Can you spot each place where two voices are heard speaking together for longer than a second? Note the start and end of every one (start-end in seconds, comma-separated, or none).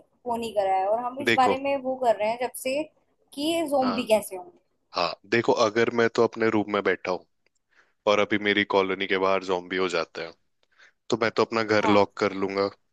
none